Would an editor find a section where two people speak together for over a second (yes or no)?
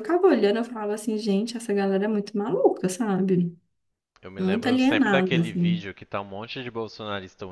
yes